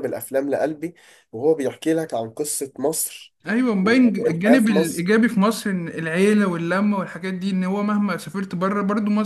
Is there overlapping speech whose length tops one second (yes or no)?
yes